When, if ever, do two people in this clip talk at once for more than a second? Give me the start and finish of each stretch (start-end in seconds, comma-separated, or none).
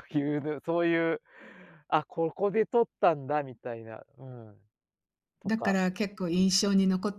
none